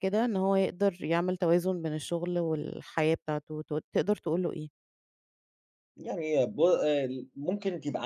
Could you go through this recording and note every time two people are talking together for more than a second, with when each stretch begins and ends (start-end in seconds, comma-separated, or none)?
none